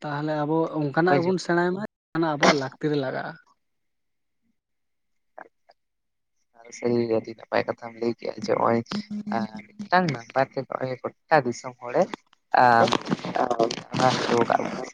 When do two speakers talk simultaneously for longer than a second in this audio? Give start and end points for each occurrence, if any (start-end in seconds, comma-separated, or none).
none